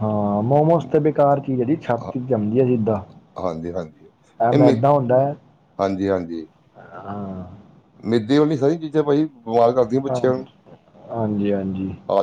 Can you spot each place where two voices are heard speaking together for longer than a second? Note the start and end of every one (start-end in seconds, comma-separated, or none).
none